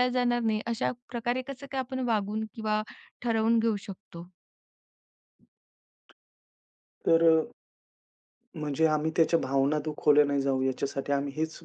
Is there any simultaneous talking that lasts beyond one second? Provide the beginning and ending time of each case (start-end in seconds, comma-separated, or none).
none